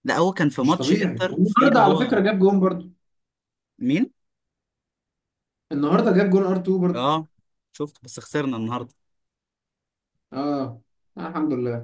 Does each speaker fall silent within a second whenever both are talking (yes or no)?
no